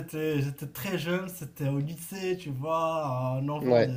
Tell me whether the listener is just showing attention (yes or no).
yes